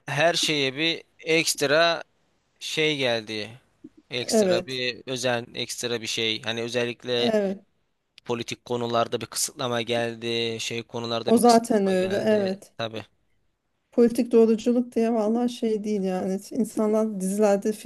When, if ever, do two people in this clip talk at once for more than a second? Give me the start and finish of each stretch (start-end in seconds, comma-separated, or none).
11.3-12.7